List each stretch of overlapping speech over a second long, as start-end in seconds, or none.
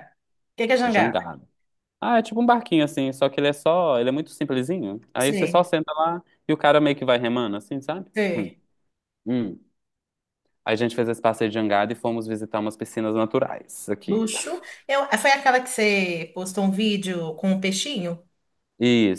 none